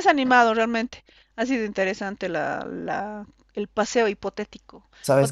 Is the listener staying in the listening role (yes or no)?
yes